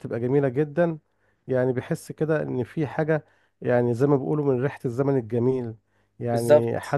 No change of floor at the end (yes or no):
yes